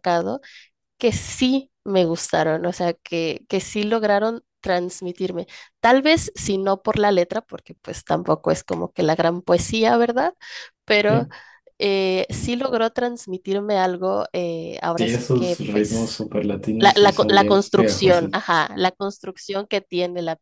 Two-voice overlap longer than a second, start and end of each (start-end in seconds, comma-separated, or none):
14.9-16.2, 16.8-18.4